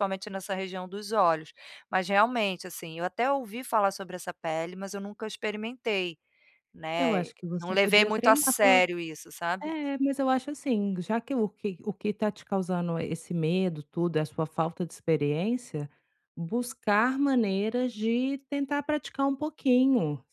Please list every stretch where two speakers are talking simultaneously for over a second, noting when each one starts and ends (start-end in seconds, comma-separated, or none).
7.0-8.8